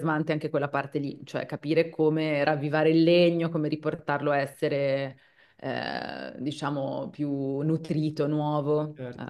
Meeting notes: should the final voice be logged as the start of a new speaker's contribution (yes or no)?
yes